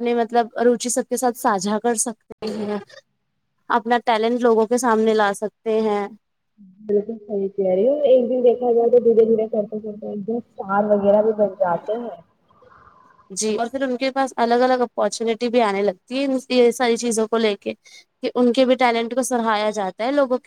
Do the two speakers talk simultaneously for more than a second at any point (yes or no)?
no